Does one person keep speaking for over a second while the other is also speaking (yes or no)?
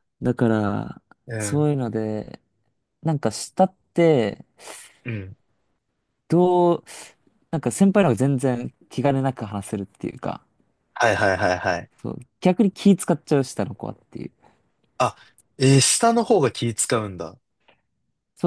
no